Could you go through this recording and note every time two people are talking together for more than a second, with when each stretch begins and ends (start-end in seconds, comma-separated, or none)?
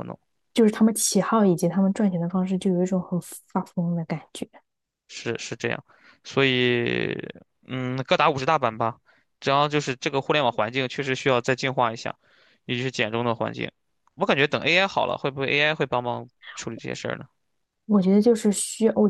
none